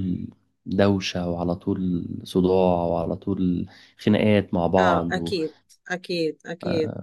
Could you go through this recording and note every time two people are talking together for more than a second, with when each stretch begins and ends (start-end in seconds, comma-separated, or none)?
none